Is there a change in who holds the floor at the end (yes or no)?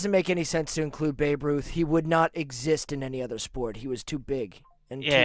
yes